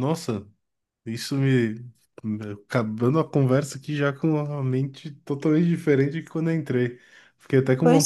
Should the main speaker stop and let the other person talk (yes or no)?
no